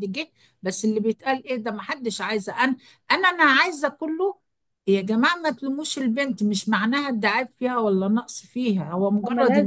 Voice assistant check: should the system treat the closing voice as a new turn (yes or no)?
no